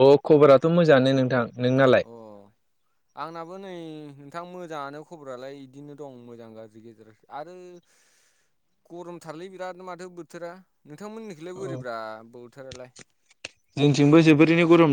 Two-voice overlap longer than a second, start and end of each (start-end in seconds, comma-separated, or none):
none